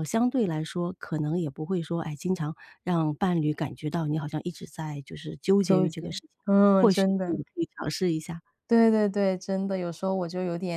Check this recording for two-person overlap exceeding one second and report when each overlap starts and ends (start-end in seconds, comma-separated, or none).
5.6-7.4